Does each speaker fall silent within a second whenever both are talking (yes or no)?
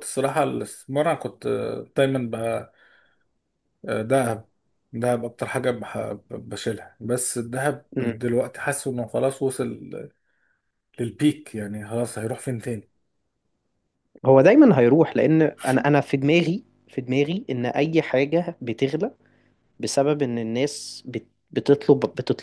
yes